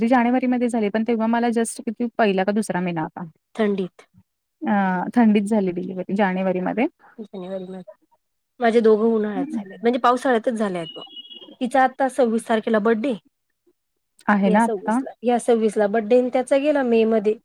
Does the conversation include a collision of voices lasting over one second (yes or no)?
no